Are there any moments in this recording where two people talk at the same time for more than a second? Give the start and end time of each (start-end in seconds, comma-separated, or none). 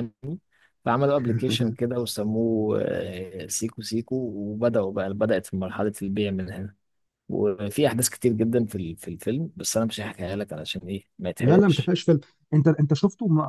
none